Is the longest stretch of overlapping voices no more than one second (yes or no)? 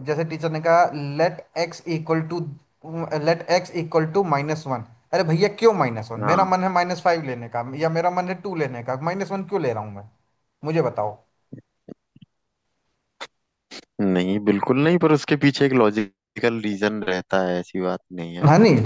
yes